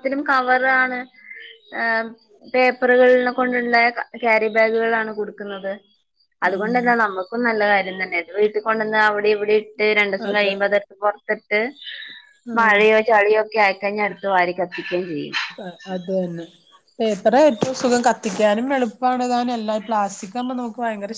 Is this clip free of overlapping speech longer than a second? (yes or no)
yes